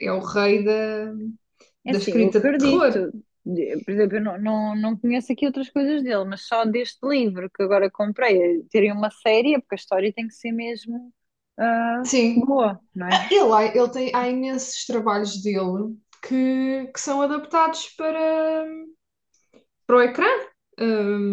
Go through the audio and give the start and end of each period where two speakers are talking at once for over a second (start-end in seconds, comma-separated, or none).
1.9-3.1